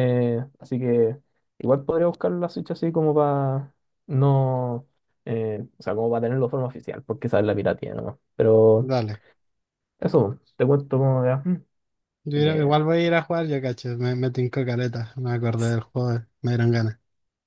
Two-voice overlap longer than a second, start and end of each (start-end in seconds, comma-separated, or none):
none